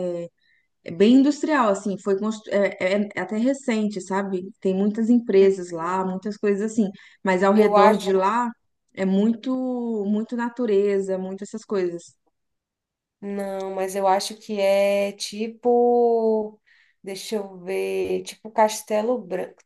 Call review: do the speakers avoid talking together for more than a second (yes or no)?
yes